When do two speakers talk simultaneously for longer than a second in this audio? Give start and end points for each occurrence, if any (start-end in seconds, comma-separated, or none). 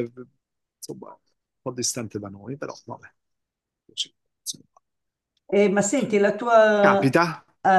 none